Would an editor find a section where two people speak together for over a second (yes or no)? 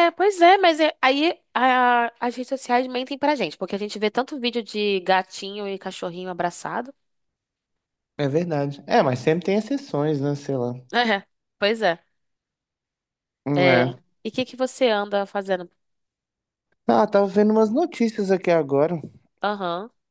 no